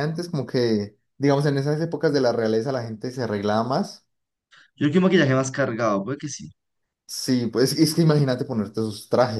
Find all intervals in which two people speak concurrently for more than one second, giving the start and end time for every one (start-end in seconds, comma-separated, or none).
none